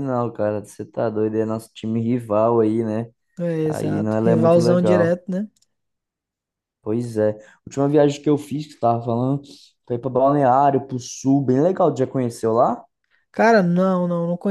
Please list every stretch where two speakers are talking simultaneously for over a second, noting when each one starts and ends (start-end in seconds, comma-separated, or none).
3.6-5.2